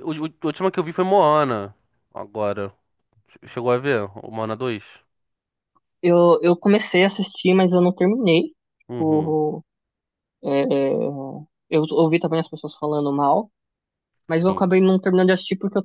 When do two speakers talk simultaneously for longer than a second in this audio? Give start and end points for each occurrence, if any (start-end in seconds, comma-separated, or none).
none